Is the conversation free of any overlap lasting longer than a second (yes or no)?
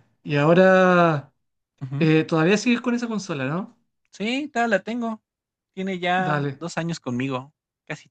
yes